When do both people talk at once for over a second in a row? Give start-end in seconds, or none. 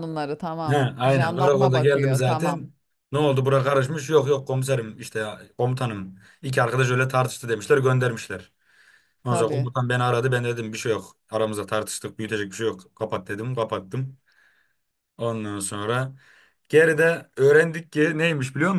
0.7-2.6